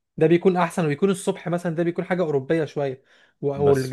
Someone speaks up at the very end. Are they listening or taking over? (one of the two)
listening